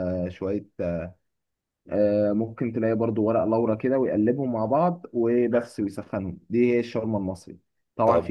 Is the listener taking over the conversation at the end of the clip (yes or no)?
no